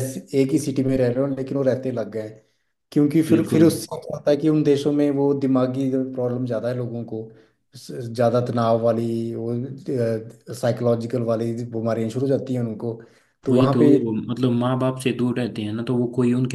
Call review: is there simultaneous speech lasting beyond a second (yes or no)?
no